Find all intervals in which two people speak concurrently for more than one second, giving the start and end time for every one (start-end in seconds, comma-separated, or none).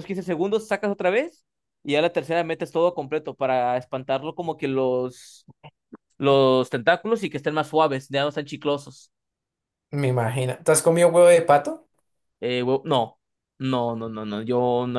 none